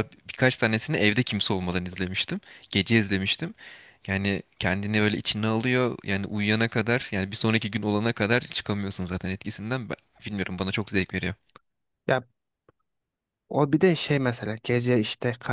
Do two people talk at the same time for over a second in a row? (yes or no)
no